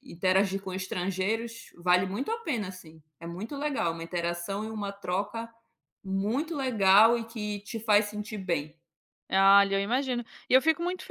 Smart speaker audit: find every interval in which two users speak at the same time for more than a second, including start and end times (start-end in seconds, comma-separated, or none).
none